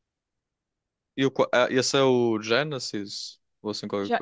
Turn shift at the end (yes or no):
yes